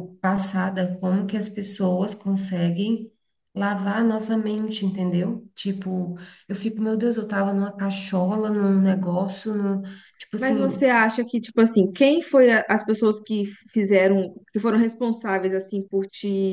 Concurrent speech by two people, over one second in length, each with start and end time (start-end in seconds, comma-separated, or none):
none